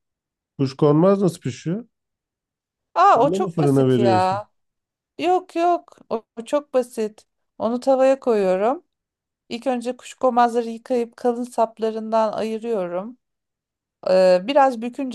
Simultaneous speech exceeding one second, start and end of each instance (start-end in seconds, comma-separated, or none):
3.1-4.3